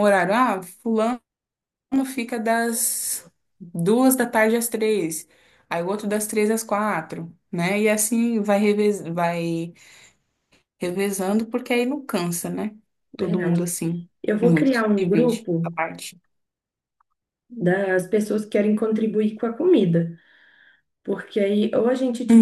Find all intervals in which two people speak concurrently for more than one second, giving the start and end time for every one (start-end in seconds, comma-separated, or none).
14.2-15.7